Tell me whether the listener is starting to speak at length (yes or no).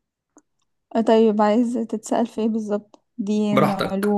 yes